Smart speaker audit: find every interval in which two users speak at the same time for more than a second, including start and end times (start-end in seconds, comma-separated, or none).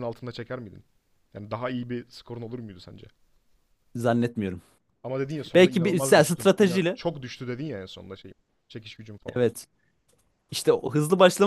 5.5-7.0